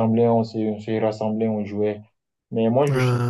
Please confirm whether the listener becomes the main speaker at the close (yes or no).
no